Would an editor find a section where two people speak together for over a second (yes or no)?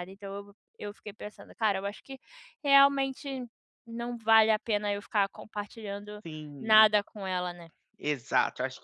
no